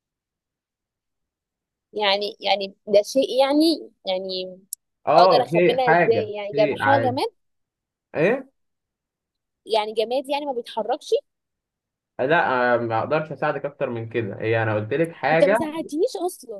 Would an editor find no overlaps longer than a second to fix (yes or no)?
no